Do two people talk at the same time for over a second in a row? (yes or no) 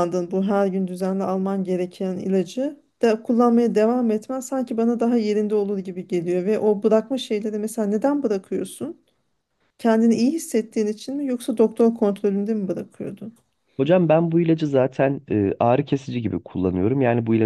no